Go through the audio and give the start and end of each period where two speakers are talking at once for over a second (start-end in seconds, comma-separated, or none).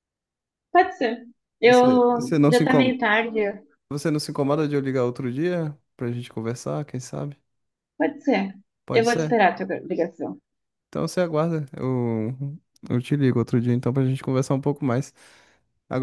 1.6-3.0